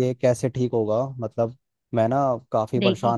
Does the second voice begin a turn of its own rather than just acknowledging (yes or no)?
no